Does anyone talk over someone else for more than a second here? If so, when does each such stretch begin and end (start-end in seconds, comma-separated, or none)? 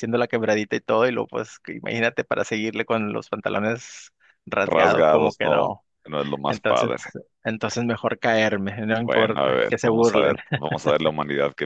4.6-5.8, 9.0-10.4